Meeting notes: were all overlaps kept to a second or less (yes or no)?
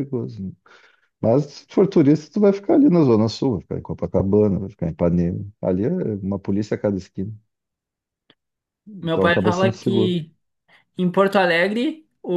no